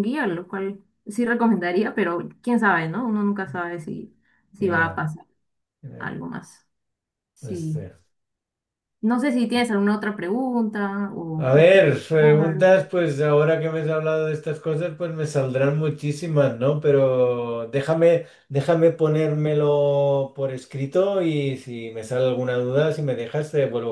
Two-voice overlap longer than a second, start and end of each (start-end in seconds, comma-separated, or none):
11.4-12.8